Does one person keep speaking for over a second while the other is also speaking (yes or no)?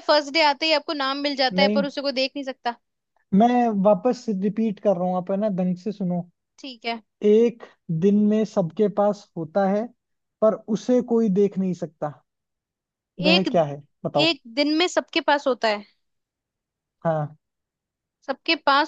no